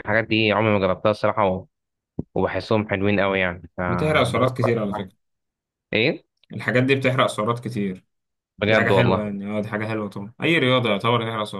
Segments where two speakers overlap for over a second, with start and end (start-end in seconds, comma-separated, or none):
3.9-5.1